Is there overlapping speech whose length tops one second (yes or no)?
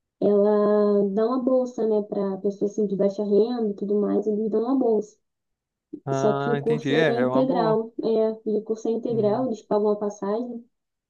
yes